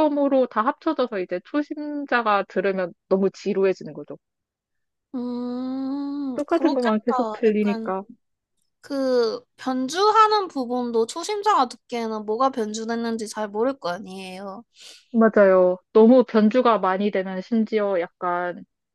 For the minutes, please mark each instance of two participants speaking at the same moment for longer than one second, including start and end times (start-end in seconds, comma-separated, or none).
6.3-7.9